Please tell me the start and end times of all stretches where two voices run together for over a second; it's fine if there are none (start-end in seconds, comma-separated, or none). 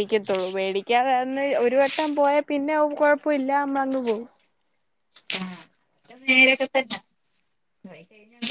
none